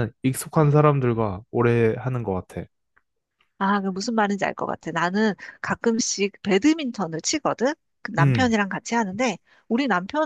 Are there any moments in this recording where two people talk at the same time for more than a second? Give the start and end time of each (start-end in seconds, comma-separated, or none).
none